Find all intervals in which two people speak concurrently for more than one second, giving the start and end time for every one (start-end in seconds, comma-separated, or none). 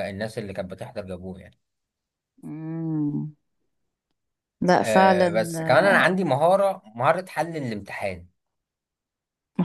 4.8-6.1